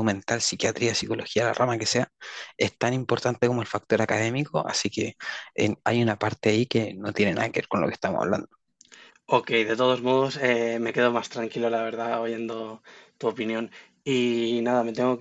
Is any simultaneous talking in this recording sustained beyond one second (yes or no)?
no